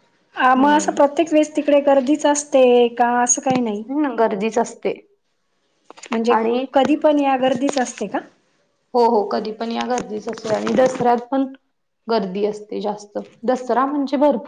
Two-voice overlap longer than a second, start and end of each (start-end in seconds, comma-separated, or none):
none